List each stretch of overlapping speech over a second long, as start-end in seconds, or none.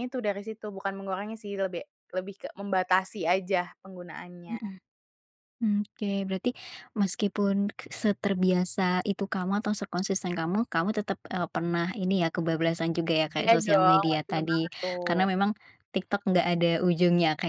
13.4-15.3